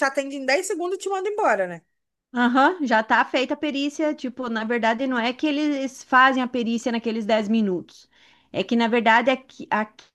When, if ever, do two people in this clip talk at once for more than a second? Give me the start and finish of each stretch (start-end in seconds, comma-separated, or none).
none